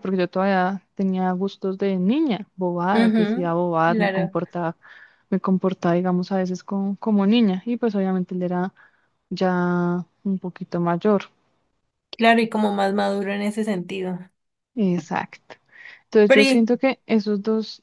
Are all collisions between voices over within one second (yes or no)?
no